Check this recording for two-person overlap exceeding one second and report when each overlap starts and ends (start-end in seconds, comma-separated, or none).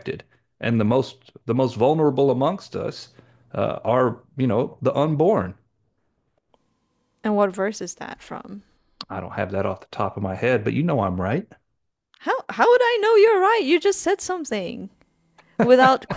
none